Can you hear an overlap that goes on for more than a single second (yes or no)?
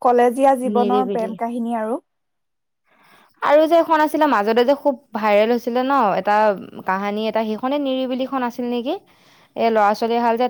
no